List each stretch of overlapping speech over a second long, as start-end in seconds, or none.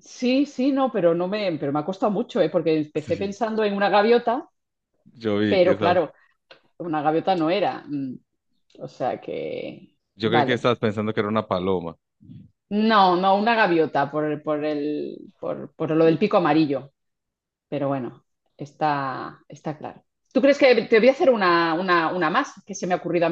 none